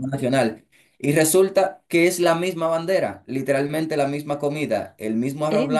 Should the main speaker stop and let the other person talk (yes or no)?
no